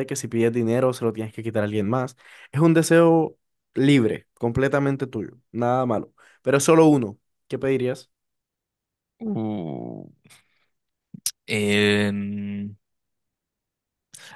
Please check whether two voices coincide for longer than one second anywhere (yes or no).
no